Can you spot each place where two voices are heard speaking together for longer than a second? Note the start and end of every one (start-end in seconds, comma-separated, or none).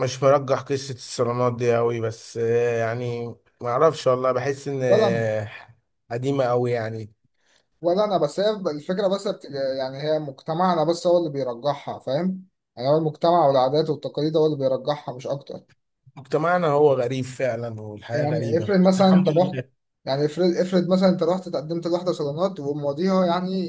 18.1-19.6